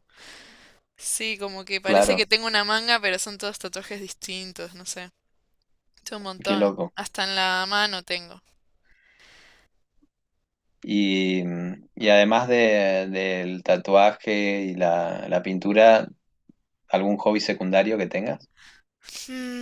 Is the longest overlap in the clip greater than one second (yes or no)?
no